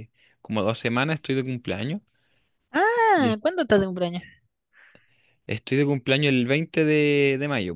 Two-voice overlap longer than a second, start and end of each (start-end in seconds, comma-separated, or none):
none